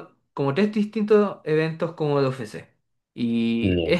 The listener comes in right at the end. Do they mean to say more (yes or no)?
no